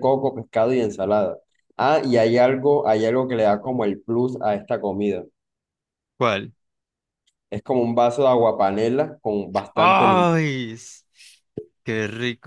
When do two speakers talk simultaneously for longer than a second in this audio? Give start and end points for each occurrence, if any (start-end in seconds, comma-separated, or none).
none